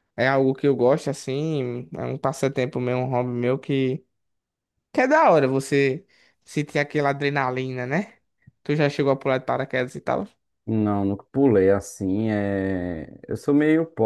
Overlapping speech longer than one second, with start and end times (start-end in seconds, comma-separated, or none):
none